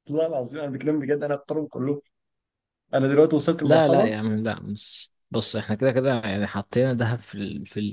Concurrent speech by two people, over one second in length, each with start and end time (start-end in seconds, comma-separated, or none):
none